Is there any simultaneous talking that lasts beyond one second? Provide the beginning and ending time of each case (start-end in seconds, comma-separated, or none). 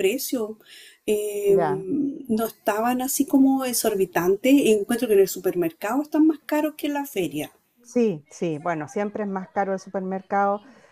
none